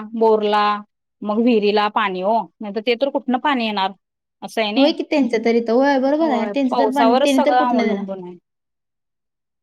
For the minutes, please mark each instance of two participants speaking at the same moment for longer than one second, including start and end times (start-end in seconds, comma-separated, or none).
6.1-8.0